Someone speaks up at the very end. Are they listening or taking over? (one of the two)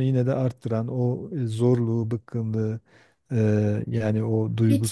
listening